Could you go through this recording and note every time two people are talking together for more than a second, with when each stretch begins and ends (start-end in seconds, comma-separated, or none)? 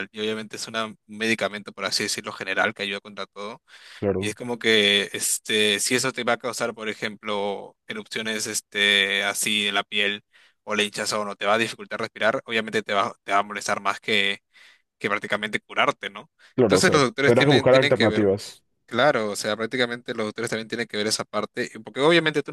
16.5-18.3